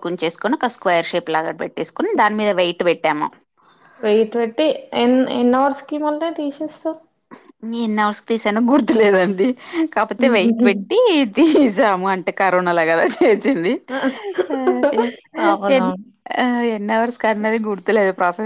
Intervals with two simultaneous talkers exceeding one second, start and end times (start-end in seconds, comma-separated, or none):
none